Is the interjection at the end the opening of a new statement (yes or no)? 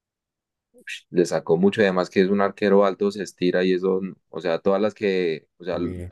no